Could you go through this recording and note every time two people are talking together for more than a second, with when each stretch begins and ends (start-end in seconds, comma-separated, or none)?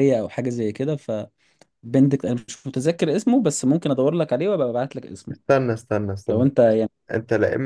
none